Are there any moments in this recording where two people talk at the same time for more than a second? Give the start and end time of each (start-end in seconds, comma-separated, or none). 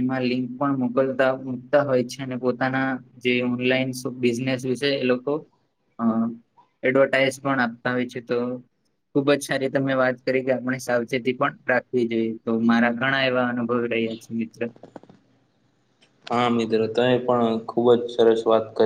none